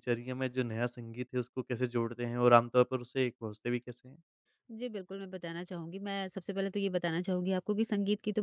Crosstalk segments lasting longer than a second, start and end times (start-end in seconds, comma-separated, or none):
none